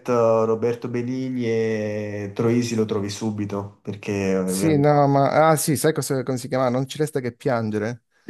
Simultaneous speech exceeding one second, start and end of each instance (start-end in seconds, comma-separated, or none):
none